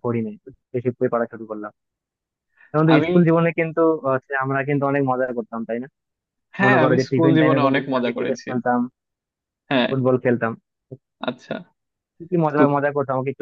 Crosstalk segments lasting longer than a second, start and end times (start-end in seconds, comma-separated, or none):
6.6-8.5